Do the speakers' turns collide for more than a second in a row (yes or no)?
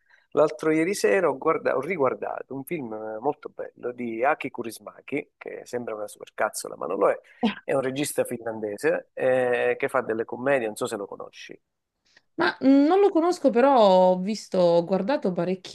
no